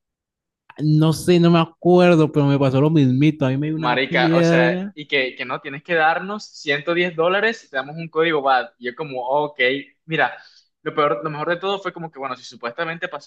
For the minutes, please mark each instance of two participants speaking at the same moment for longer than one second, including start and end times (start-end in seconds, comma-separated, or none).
3.7-5.0